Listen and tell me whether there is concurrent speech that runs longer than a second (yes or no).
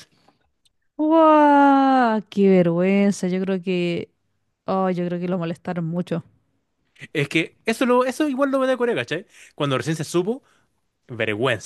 no